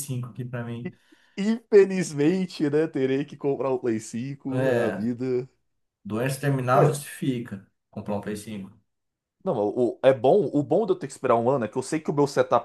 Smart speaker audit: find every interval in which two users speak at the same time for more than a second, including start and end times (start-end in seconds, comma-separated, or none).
none